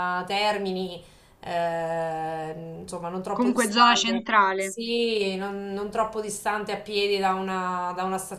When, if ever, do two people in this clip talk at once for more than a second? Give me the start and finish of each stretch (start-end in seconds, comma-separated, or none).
3.3-4.8